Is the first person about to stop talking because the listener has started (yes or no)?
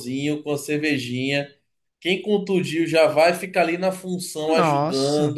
no